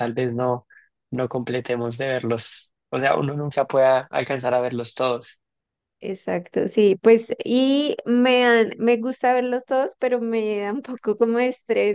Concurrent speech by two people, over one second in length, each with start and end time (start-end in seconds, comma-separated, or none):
none